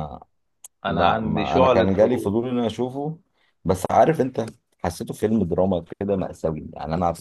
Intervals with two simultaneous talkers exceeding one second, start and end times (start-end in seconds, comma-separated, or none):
0.9-2.4